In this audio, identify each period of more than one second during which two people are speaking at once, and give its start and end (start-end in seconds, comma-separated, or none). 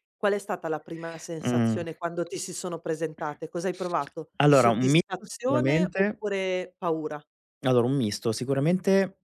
4.4-6.2